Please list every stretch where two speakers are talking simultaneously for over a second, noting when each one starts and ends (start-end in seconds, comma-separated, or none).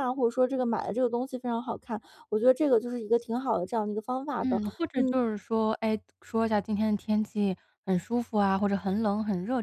none